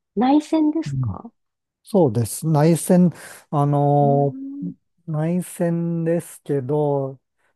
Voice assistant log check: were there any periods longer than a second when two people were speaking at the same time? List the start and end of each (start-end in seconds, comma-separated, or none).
none